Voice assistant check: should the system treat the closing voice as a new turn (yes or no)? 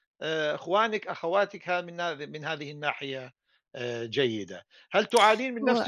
no